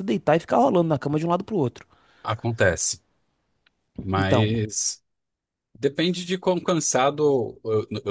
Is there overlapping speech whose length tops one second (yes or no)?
no